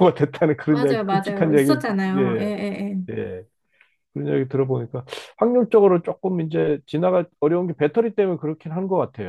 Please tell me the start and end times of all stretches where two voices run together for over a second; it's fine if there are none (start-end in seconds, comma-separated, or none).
0.7-2.5